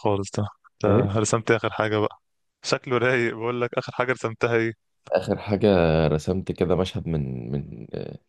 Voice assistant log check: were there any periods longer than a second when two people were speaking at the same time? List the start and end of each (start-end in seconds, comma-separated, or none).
none